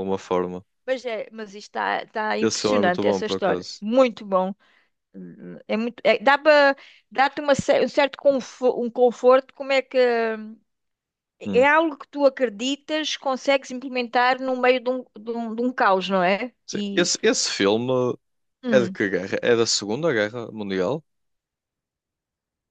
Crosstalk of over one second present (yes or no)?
yes